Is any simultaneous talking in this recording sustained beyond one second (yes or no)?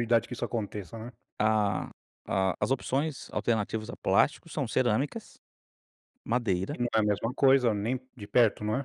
no